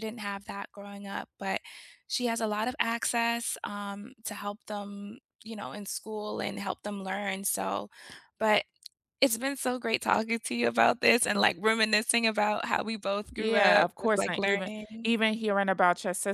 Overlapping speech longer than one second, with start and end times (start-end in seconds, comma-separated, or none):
13.4-15.1